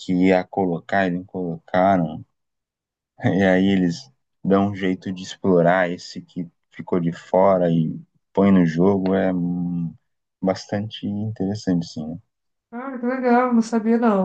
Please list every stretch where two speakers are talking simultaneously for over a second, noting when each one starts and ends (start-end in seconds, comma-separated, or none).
none